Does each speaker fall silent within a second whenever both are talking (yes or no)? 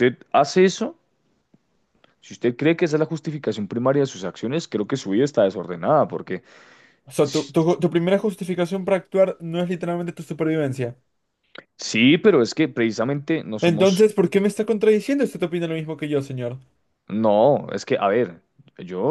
yes